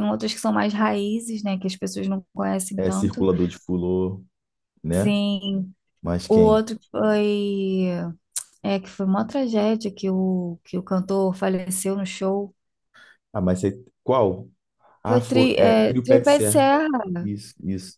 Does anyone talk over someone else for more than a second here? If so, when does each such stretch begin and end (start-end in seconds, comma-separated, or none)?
15.0-16.6